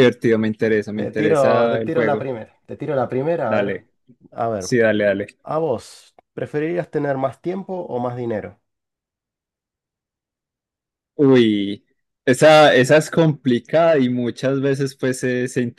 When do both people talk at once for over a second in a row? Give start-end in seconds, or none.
0.9-2.3